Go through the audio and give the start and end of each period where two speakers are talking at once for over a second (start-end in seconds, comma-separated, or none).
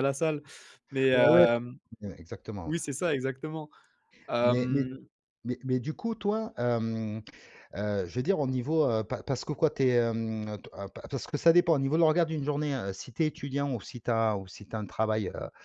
none